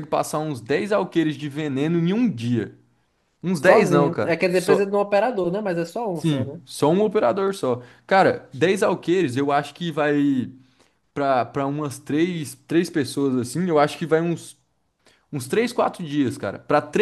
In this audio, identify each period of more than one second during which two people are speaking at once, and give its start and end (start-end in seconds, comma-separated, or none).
3.5-4.9